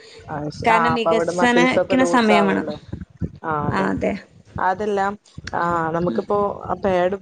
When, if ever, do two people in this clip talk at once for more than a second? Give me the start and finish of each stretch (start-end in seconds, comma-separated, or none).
0.7-2.7